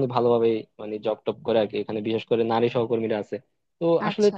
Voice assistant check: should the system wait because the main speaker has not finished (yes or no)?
yes